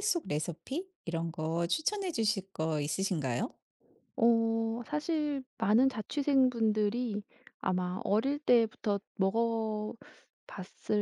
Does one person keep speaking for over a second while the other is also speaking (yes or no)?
no